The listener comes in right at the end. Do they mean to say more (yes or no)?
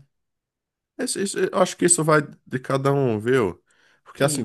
no